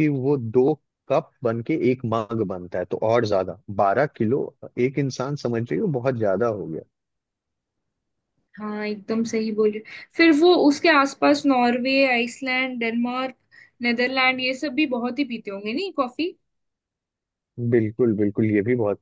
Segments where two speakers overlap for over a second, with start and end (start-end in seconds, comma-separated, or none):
none